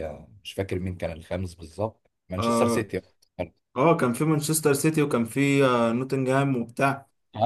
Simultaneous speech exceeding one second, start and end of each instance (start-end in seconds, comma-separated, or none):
none